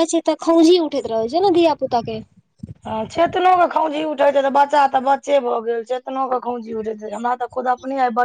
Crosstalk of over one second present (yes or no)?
no